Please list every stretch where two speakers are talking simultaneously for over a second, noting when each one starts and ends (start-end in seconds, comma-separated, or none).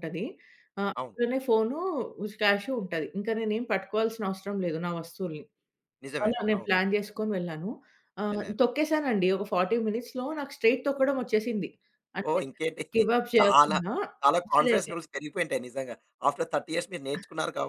none